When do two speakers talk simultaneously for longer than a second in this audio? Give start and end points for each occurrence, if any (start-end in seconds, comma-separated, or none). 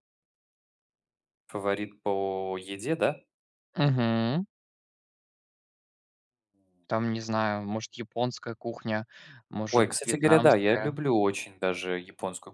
9.7-11.0